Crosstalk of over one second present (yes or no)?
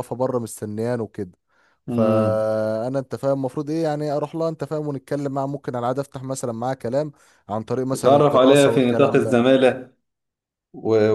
yes